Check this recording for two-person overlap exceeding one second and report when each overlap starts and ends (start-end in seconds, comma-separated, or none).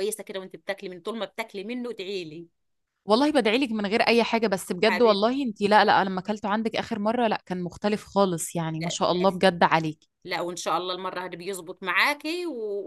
none